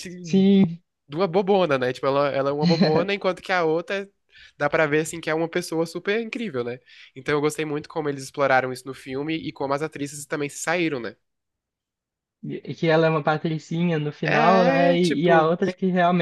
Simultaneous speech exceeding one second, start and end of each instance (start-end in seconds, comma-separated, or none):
14.2-15.5